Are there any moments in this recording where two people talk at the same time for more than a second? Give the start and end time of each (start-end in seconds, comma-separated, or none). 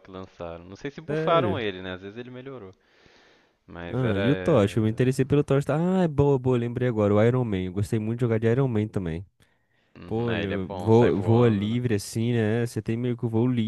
10.1-11.8